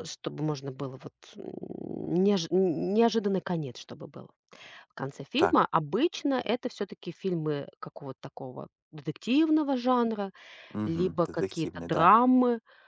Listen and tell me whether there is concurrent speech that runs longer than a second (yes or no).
yes